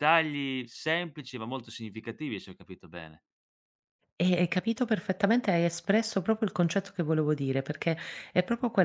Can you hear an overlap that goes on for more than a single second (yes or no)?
no